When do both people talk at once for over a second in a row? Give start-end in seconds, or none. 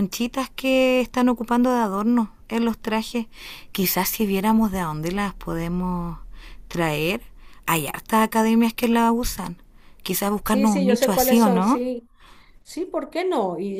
10.4-11.8